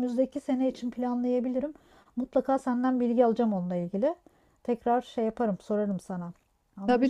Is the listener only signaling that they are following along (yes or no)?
no